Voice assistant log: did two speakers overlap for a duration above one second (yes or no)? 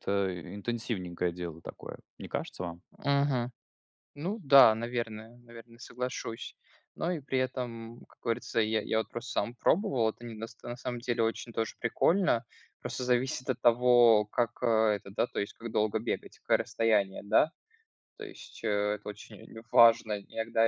no